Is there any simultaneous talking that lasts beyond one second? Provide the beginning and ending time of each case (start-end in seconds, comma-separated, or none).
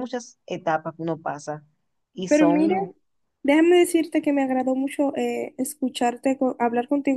none